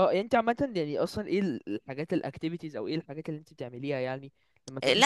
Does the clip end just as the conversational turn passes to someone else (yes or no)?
yes